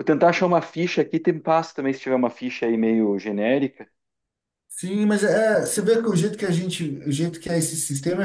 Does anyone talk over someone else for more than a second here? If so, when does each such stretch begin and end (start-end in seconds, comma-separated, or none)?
none